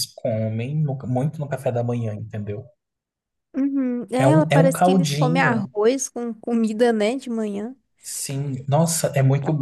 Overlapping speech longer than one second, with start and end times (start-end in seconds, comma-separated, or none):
4.2-5.7